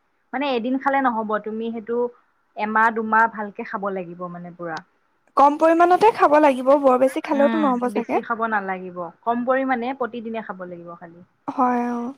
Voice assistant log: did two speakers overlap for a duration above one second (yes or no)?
no